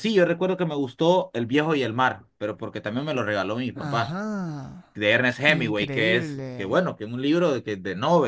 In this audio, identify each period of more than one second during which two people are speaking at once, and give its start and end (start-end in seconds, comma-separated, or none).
5.5-6.8